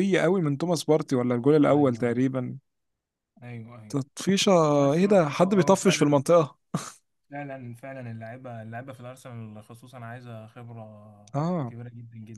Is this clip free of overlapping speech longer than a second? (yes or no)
no